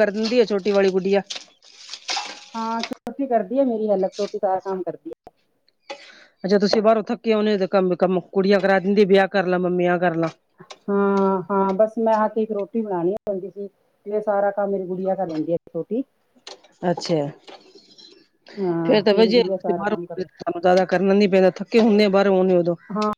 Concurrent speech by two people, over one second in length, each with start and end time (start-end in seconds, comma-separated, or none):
none